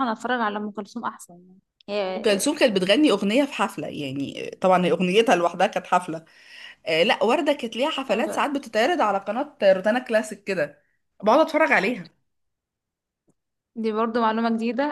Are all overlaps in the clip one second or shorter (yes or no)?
yes